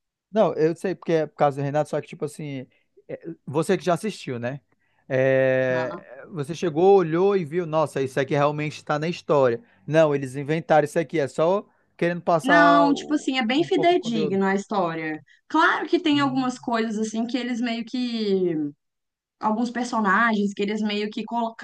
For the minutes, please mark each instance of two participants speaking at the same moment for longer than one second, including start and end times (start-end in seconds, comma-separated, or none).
12.4-14.4